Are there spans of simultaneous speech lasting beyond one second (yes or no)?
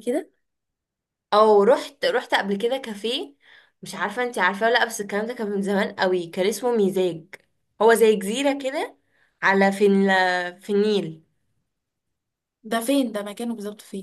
no